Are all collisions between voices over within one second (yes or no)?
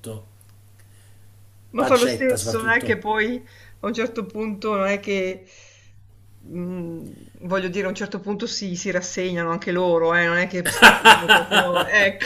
no